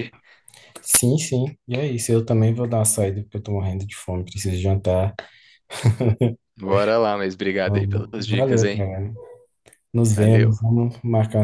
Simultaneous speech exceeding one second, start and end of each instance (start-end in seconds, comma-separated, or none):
7.6-8.9